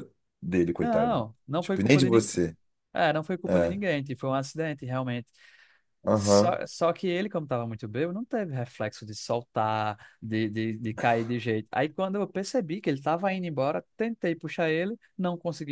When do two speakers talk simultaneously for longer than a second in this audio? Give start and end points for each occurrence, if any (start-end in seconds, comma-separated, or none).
0.8-2.4